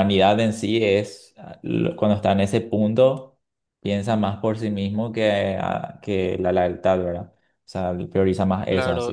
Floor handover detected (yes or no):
yes